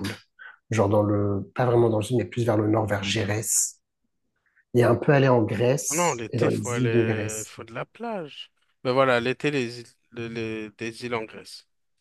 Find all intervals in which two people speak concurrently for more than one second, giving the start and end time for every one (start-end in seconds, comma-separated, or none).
5.9-7.5